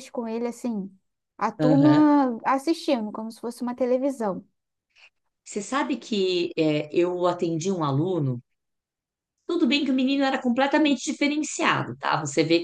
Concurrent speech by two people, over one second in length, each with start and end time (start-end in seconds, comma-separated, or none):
none